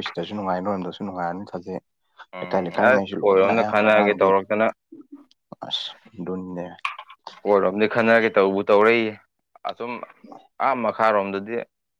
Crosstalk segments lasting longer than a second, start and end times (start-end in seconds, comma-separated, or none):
2.4-4.3